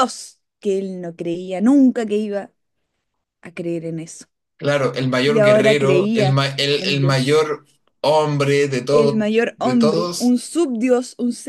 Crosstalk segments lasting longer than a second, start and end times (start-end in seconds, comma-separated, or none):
5.2-7.4, 8.9-10.3